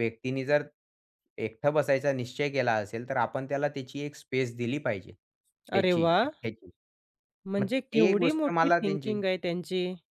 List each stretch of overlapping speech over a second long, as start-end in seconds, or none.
7.6-9.2